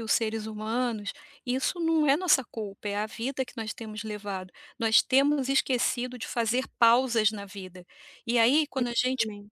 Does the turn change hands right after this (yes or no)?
no